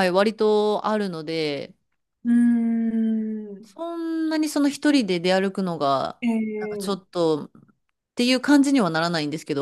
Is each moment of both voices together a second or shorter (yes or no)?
yes